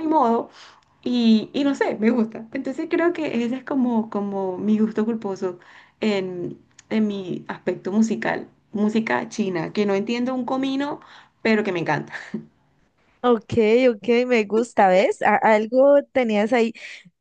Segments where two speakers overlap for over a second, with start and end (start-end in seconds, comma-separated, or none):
none